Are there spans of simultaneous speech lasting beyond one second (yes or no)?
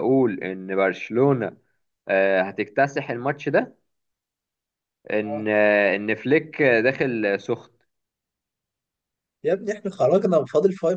no